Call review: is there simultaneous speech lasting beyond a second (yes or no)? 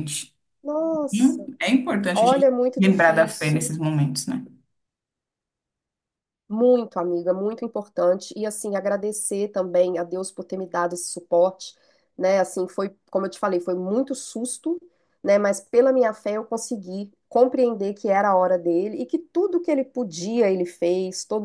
yes